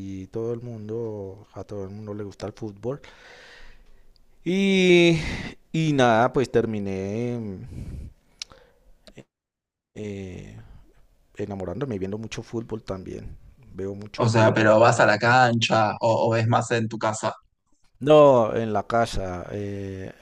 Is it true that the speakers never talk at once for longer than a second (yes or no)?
yes